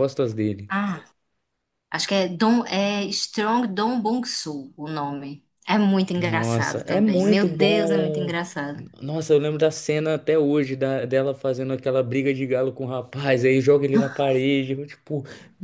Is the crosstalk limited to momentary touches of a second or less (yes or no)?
no